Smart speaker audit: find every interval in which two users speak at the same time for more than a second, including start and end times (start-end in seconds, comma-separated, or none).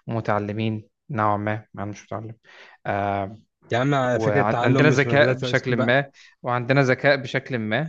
4.1-5.9